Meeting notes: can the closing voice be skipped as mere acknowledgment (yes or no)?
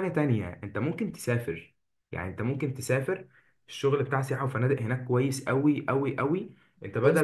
yes